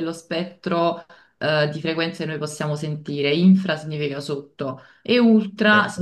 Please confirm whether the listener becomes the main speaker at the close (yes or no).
no